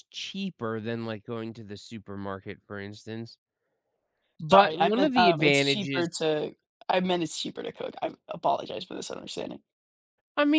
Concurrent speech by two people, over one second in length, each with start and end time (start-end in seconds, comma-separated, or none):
4.5-6.1